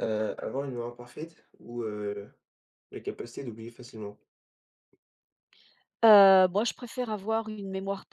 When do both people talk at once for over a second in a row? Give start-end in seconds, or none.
none